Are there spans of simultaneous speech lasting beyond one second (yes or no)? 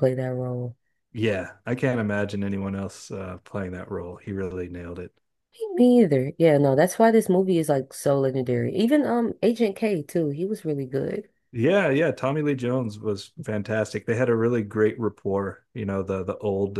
no